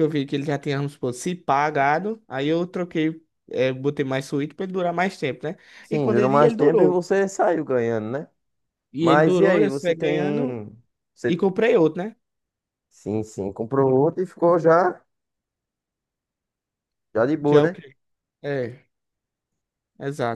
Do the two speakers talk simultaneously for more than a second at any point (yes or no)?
yes